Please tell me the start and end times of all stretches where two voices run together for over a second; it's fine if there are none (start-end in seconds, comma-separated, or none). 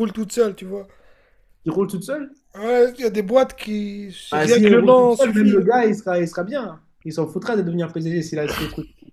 4.3-5.6